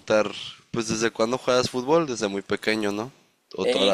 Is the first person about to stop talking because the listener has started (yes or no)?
yes